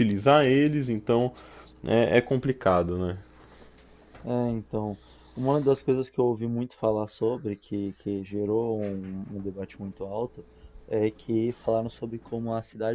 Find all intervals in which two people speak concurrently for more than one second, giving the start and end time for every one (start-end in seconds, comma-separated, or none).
none